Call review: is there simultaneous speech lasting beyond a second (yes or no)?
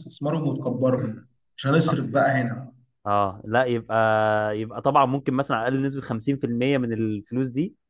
no